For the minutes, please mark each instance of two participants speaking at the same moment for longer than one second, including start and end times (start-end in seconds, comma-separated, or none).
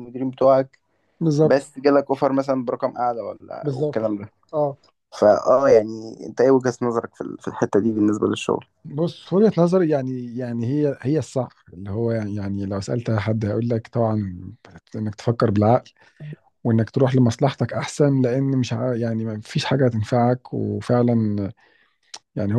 none